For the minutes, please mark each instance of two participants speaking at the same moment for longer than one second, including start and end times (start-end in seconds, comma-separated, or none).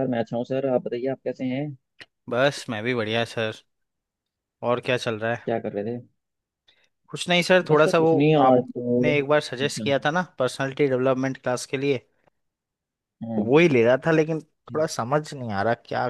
7.7-9.9